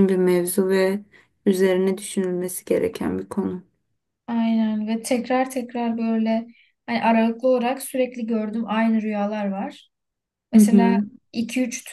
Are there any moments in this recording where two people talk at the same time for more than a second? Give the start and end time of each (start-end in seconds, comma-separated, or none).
none